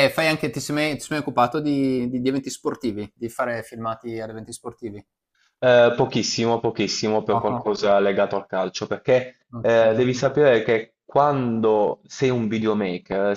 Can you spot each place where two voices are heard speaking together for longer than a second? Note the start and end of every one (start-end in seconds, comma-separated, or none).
none